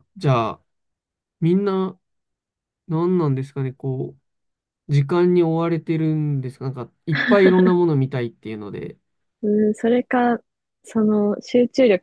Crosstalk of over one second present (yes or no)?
no